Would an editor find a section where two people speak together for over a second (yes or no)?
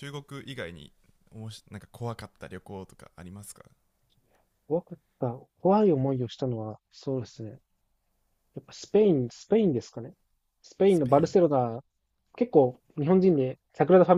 no